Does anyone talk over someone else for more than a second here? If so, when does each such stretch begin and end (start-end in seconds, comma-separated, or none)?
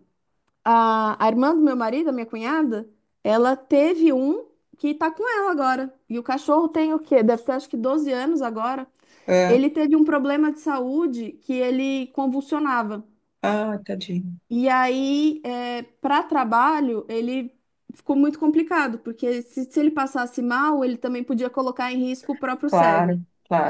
none